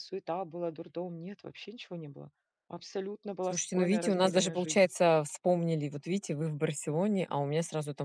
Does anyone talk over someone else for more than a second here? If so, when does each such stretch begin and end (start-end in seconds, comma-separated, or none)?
3.4-4.9